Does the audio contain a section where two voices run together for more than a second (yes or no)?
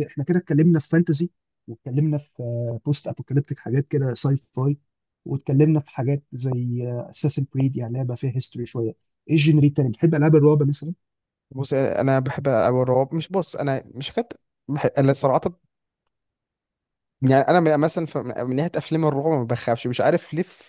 no